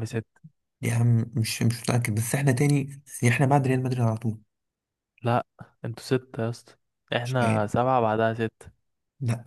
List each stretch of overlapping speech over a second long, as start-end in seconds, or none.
none